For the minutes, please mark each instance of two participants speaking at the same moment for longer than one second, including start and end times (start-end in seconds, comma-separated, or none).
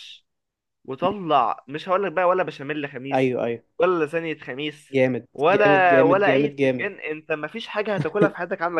5.3-6.9